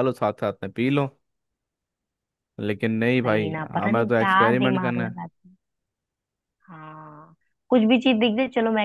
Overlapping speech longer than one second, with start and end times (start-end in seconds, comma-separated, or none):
3.2-5.2